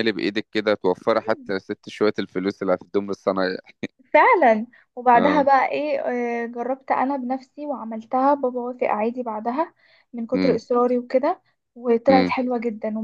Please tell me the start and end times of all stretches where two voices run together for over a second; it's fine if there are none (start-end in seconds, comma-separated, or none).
none